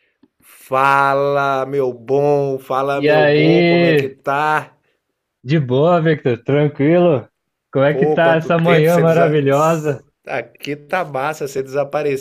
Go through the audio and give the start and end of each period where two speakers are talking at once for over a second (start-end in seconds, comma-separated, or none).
2.9-4.1, 7.9-9.3